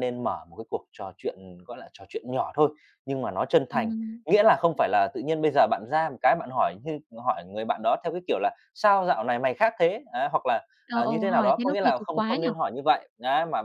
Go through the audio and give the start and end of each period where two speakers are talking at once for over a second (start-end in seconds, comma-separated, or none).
10.9-12.5